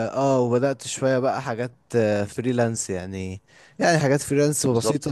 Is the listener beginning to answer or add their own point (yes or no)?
no